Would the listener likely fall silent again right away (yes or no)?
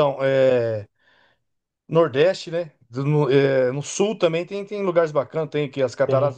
yes